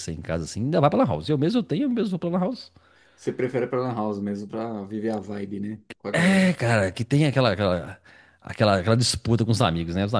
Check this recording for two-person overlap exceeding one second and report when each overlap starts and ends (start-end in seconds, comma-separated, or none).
none